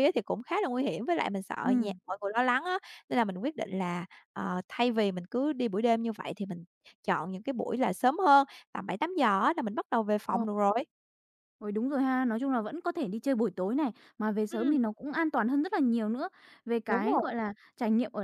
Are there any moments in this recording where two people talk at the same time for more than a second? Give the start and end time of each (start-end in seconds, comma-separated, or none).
none